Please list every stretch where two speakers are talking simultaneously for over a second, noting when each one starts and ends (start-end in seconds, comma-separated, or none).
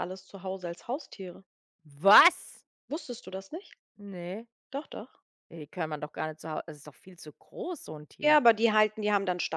none